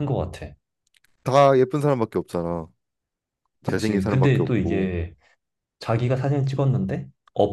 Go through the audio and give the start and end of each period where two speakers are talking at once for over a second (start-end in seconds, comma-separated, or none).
3.6-4.9